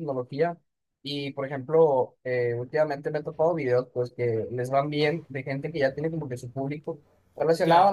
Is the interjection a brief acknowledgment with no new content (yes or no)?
yes